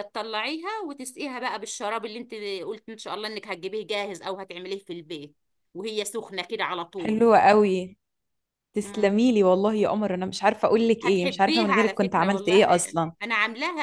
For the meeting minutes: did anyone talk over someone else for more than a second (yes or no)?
yes